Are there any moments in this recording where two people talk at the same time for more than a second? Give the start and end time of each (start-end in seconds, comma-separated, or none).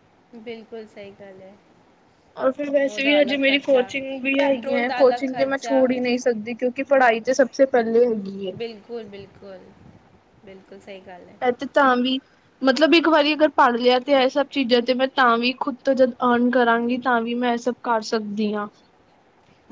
4.4-5.8